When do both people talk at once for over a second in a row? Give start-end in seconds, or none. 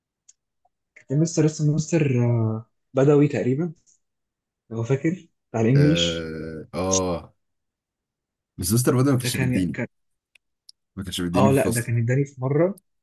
none